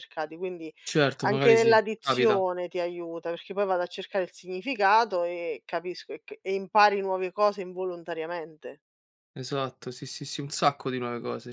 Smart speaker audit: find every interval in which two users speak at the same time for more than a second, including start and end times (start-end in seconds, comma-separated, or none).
1.2-2.4